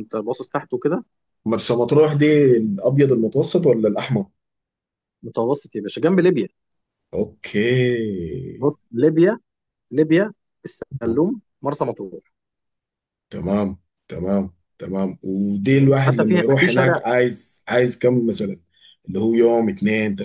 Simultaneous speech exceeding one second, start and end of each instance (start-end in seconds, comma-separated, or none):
15.7-17.0